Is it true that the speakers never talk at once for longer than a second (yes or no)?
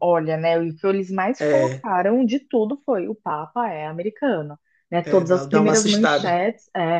no